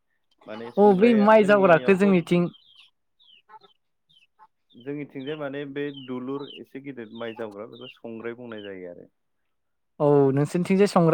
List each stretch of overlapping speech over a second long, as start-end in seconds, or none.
0.8-2.4